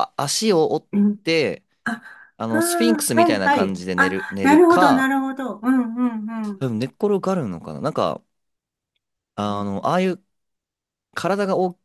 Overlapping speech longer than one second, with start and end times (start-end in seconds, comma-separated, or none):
2.4-5.2